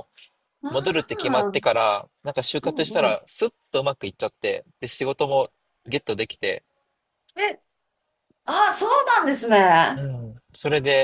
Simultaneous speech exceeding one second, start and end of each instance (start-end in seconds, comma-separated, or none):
none